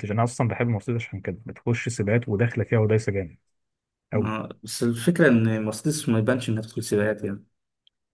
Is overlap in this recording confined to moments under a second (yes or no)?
yes